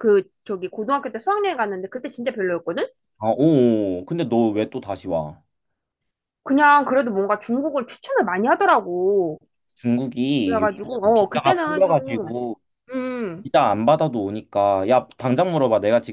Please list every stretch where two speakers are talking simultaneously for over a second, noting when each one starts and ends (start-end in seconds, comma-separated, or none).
10.4-12.3